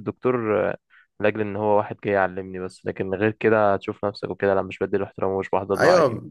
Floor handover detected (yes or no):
yes